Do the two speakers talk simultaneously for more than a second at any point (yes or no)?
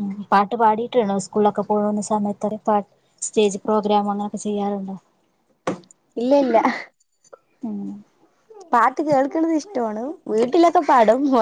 no